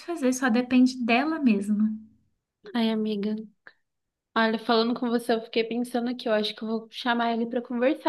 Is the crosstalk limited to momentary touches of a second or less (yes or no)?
yes